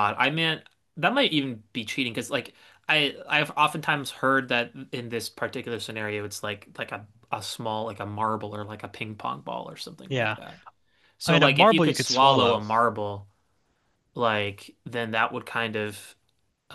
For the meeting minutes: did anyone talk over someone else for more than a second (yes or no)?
yes